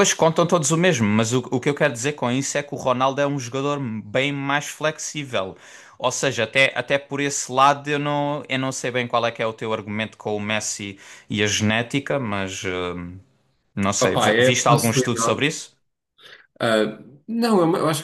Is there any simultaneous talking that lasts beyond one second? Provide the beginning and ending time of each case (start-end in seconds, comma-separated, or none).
14.0-15.4